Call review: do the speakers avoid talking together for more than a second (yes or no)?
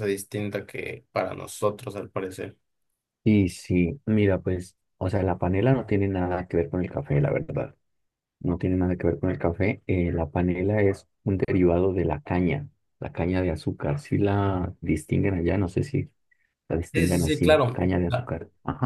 no